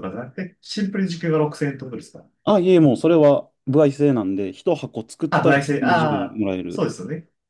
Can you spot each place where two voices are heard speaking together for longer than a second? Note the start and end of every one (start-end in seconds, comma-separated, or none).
5.3-6.9